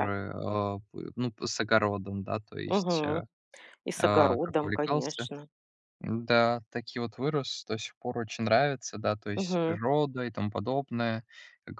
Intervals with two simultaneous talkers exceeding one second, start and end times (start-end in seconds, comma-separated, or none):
4.0-5.3